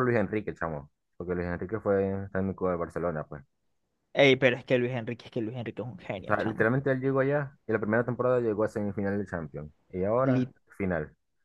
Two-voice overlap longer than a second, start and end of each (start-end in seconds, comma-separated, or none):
none